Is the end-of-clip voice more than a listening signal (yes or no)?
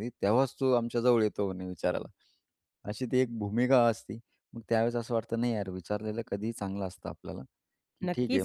yes